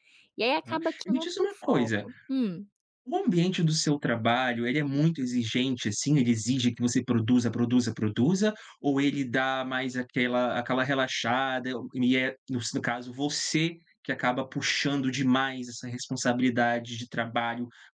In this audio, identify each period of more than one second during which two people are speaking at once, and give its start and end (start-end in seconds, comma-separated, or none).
0.7-2.1